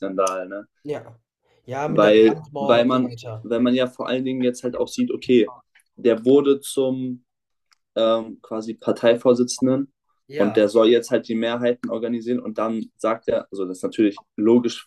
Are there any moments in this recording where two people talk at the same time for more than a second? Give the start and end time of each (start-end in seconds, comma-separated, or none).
1.9-3.5